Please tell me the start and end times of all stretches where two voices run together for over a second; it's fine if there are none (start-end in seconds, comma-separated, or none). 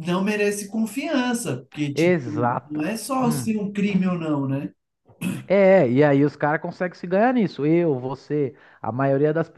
1.9-3.5